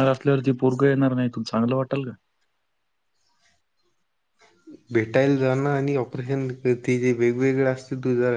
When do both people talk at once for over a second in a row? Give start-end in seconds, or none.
none